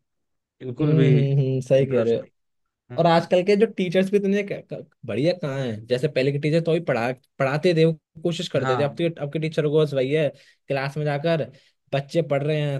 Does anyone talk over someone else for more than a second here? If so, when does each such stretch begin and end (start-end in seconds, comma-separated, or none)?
0.8-2.3